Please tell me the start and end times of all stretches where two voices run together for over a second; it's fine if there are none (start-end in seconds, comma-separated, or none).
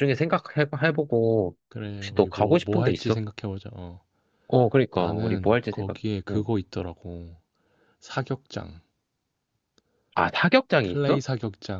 2.0-3.2, 4.9-6.5